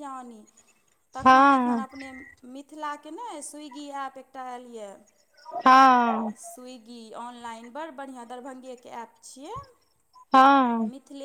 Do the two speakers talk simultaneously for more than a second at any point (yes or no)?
no